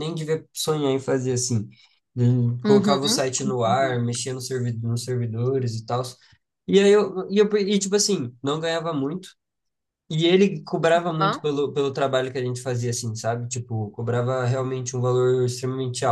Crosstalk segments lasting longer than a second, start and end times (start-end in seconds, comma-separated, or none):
2.6-4.0